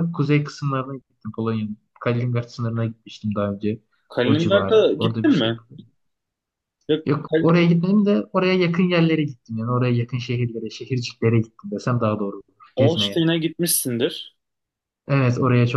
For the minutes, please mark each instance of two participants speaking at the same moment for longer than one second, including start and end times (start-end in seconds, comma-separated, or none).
4.2-5.6